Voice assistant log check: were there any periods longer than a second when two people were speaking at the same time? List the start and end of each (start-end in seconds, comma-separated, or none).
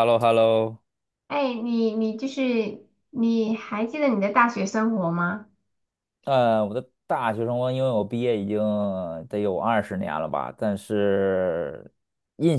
none